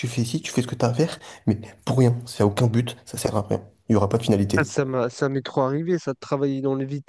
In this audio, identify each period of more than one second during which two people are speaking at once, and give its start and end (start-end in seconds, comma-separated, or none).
none